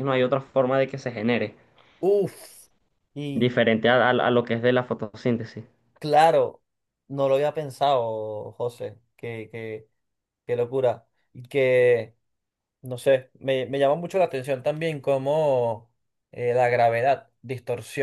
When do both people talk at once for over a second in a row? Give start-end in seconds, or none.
none